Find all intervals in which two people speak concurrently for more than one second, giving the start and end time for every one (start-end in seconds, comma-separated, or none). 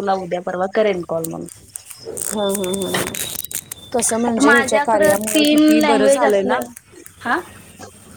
4.3-6.6